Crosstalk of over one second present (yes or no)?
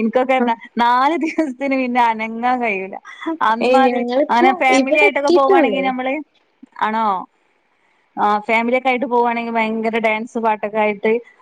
yes